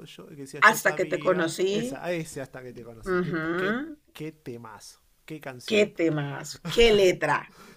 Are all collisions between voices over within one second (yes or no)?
no